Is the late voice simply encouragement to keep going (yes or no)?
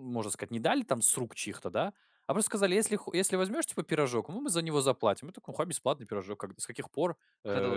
yes